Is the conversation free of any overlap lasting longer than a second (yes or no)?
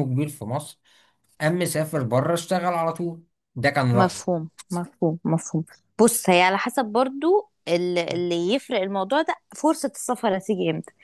yes